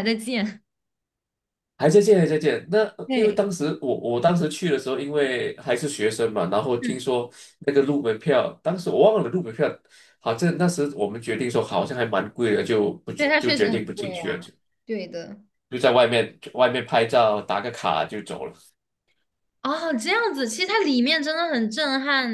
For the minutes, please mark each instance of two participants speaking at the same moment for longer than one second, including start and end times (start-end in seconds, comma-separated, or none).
13.2-14.4